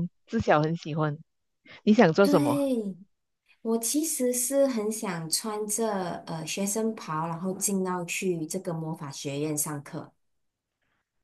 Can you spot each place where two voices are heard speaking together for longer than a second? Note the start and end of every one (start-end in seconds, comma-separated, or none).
none